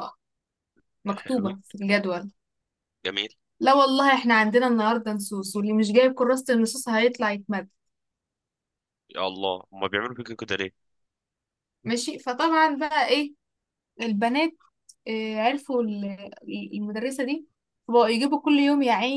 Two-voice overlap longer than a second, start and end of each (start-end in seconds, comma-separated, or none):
none